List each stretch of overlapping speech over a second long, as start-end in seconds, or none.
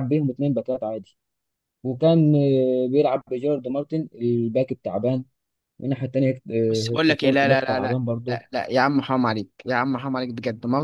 6.7-8.4